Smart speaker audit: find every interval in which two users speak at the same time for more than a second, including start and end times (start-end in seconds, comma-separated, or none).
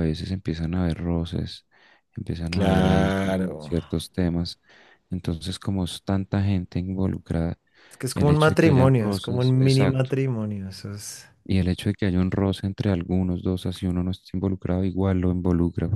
2.5-3.7, 8.1-10.1